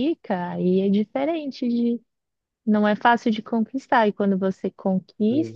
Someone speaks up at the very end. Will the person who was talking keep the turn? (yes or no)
yes